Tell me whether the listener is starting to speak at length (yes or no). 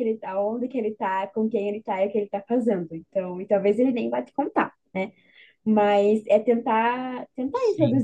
no